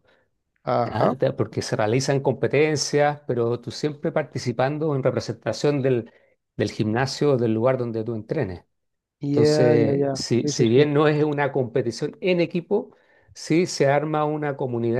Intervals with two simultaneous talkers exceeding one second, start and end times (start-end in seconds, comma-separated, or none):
9.3-10.8